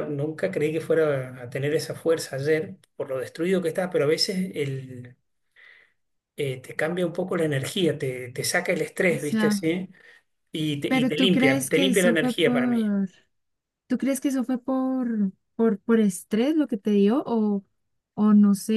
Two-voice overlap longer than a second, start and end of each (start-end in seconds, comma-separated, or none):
10.9-12.9